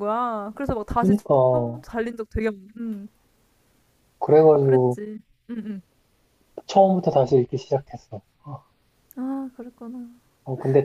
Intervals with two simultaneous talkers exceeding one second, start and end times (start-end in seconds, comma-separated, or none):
none